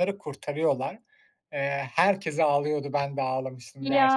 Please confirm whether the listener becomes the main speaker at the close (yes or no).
no